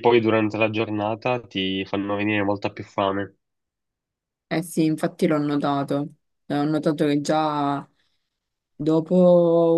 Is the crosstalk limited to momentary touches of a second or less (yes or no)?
yes